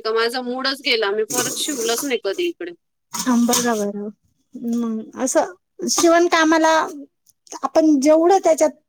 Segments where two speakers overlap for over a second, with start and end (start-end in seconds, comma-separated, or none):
none